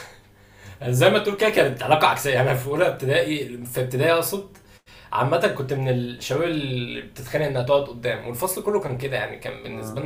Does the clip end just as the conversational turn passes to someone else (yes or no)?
no